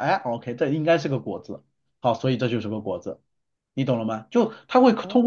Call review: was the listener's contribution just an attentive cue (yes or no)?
yes